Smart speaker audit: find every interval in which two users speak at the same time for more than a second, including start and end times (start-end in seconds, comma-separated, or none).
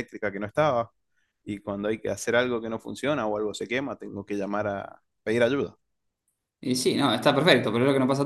none